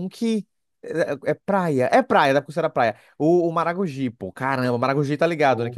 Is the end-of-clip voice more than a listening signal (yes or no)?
no